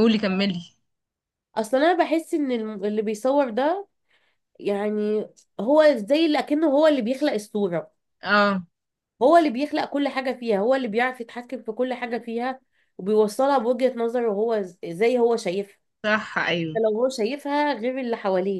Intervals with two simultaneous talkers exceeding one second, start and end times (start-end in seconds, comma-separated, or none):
none